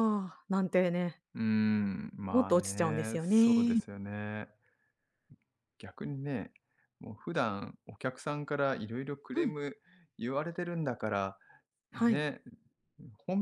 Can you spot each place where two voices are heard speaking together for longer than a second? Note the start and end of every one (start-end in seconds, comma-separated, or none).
2.3-3.8